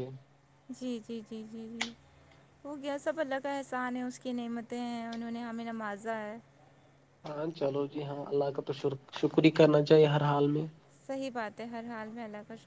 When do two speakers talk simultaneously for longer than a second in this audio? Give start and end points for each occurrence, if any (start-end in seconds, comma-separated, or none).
none